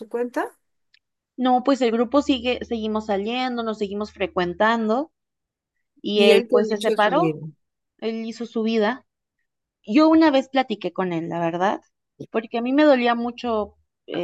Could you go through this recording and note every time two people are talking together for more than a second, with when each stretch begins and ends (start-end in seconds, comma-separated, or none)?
6.1-7.4